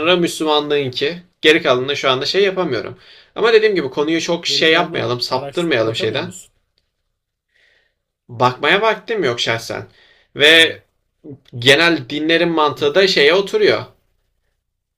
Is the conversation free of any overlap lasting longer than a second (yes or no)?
no